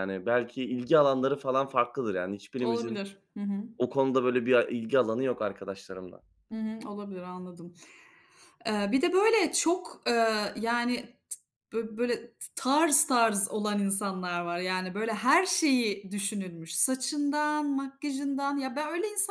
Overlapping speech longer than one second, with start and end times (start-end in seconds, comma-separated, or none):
none